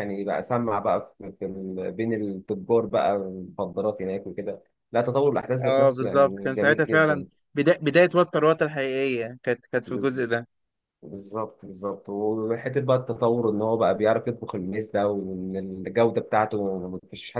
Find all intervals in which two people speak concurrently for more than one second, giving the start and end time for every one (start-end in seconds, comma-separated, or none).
5.7-7.2